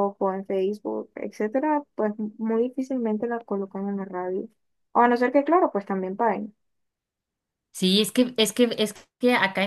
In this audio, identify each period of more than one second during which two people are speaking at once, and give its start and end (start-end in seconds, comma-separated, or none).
none